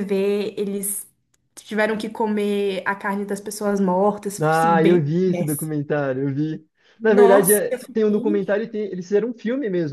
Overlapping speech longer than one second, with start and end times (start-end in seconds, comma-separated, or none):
4.4-5.8, 7.0-8.4